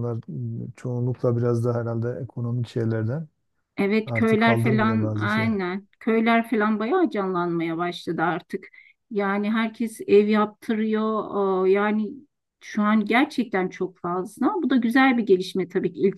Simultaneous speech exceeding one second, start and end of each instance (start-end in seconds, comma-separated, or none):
4.0-5.6